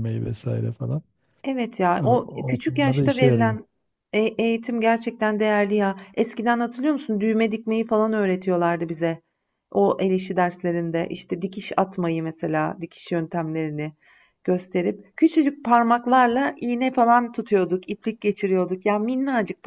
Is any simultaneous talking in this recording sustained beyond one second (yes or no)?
yes